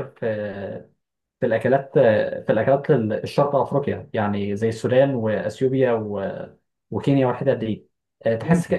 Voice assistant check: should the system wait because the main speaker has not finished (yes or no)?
yes